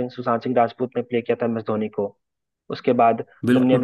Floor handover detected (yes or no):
yes